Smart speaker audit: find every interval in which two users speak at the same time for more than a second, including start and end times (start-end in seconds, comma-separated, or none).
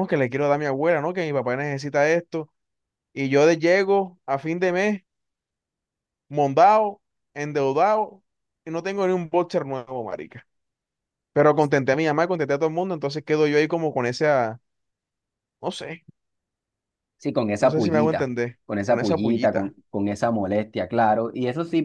17.6-19.8